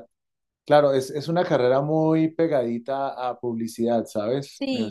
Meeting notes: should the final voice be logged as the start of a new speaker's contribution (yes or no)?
yes